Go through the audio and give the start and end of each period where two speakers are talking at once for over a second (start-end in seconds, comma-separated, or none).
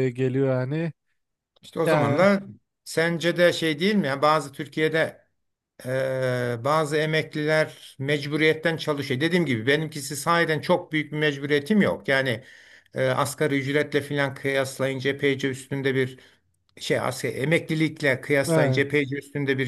none